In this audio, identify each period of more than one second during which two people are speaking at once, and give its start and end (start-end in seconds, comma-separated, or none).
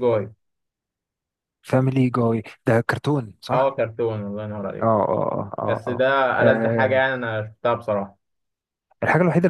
5.7-7.1